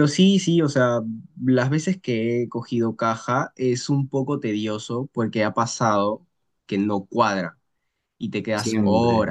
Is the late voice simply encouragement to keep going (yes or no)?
no